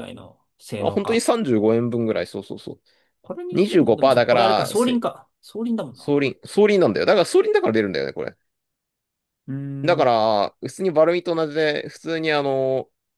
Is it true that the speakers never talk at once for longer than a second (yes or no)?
no